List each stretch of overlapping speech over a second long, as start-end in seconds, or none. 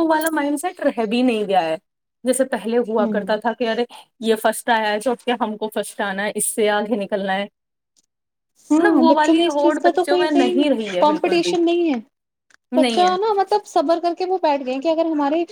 8.8-10.3